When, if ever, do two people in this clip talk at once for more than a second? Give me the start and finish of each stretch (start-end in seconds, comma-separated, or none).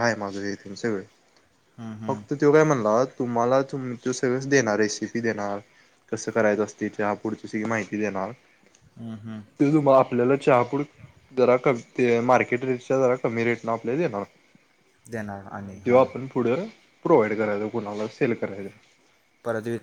none